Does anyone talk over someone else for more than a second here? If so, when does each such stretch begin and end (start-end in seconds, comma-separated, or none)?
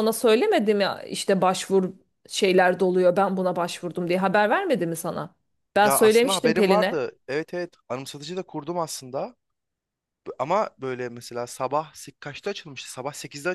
5.8-7.1